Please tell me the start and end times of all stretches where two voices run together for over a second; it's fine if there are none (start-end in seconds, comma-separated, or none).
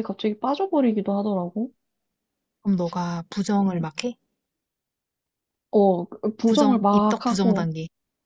6.4-7.7